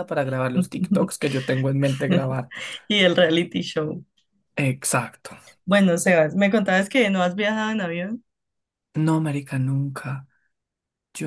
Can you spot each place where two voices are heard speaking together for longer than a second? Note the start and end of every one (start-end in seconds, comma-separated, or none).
none